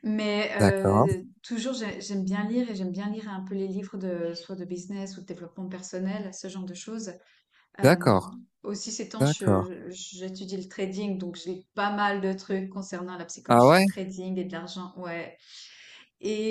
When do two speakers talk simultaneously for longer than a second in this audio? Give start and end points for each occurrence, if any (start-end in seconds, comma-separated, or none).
none